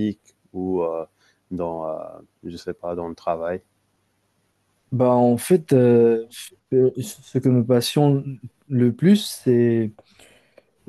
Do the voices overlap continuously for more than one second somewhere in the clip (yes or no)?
no